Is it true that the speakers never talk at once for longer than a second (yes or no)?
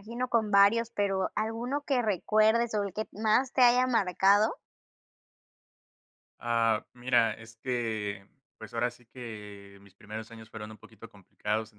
yes